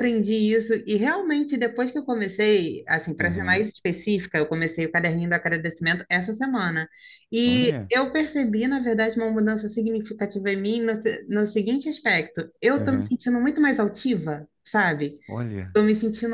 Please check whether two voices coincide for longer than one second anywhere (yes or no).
no